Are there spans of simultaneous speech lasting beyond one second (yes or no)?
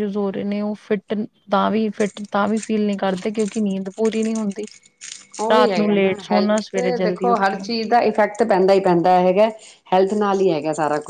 yes